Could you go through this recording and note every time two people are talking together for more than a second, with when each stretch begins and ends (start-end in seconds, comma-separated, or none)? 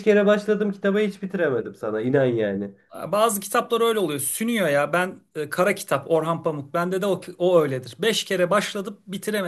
none